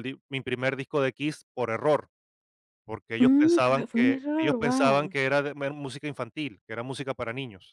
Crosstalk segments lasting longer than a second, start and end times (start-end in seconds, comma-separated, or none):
3.2-5.2